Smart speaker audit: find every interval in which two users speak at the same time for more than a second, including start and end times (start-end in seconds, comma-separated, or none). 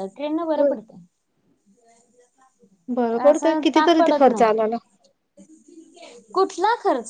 3.3-4.8